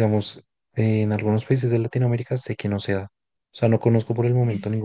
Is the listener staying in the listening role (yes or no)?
yes